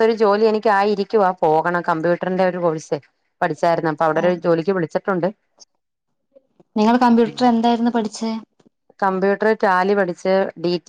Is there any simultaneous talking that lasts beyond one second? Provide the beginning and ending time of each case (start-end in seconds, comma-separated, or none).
none